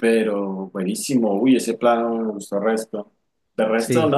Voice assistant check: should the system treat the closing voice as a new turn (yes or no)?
no